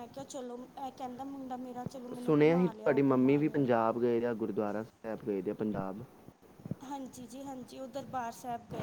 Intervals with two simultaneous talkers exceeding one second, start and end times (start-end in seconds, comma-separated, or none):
2.2-3.7